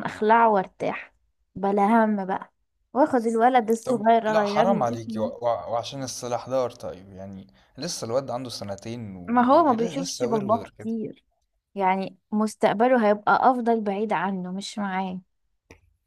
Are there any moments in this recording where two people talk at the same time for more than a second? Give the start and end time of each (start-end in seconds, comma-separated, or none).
3.9-5.3, 9.3-10.9